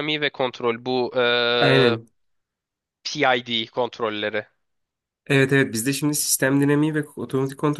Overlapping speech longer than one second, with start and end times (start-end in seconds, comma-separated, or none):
none